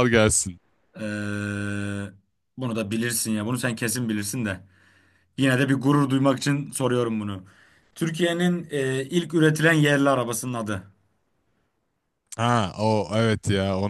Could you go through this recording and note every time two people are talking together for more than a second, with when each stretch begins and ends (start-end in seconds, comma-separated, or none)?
none